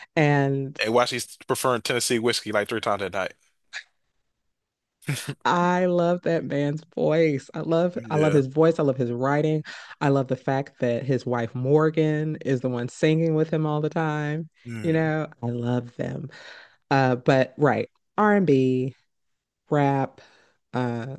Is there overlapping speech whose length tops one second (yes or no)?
no